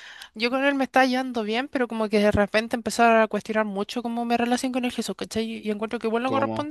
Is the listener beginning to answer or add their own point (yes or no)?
no